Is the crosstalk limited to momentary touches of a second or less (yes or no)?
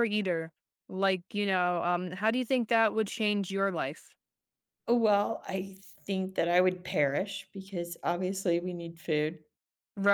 yes